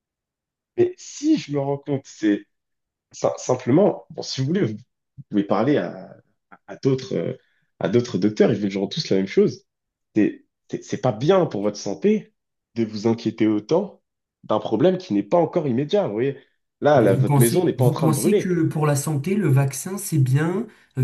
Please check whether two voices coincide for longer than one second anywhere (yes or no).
yes